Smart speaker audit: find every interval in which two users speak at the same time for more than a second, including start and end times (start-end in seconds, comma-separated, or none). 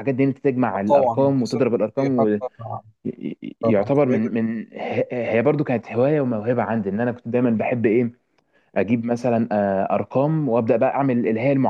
0.8-2.4